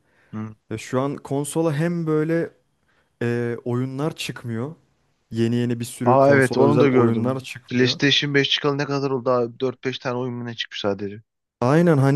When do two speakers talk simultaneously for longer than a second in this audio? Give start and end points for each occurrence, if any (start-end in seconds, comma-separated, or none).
6.0-8.0